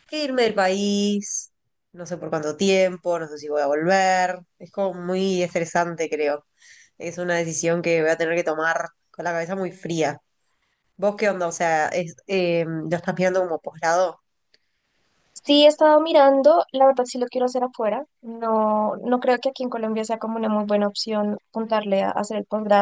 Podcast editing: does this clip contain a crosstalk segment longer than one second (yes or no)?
no